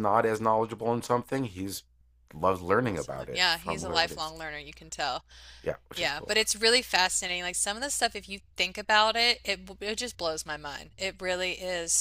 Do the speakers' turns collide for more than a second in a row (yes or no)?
yes